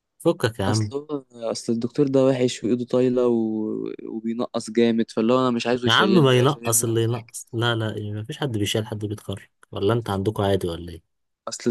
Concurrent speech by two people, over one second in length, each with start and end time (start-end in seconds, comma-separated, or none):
5.9-7.3